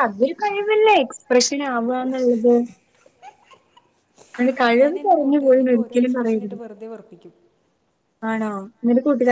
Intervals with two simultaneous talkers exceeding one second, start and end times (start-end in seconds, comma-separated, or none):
4.8-6.6